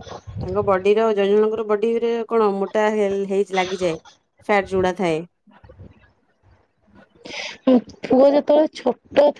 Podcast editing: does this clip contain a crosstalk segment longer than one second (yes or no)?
no